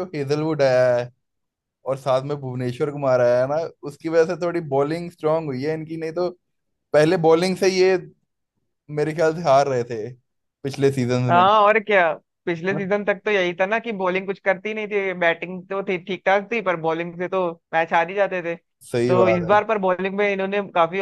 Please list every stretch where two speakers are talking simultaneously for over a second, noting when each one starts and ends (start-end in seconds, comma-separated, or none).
none